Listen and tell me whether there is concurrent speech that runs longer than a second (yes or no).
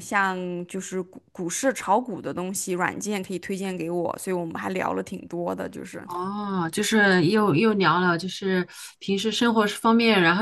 no